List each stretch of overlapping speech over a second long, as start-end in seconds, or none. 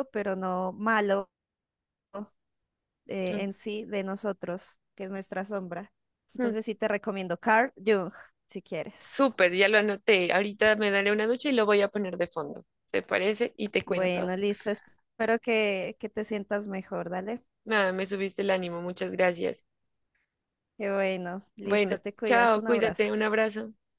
21.6-23.1